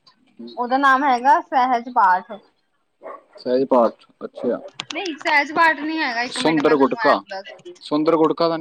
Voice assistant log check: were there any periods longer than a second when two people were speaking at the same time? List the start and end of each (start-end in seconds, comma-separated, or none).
6.4-7.7